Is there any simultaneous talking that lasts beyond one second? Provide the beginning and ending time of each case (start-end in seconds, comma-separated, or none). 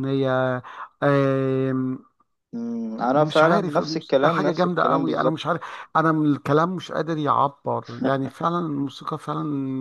3.0-5.6